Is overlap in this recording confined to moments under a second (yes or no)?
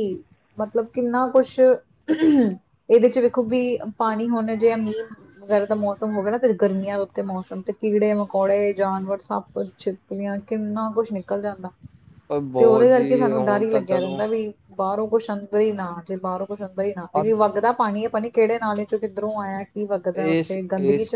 no